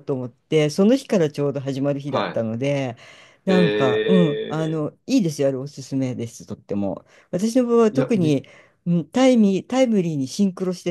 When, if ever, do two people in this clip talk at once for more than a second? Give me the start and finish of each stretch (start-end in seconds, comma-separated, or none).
3.5-4.8